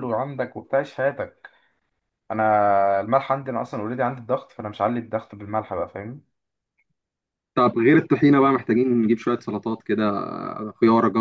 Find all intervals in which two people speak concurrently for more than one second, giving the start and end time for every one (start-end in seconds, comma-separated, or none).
none